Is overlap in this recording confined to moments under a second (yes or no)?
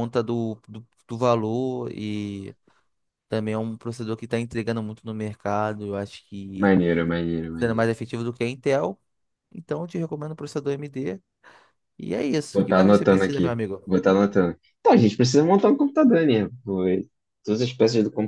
no